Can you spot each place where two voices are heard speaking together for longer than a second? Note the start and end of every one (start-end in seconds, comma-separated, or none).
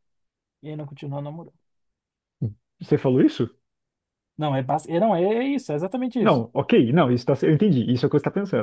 none